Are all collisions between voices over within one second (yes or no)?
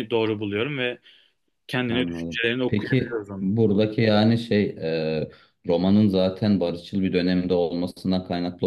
no